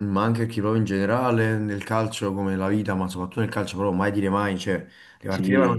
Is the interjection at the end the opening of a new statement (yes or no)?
no